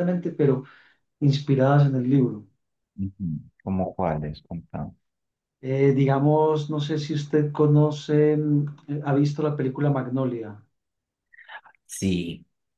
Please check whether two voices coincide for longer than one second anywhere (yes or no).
no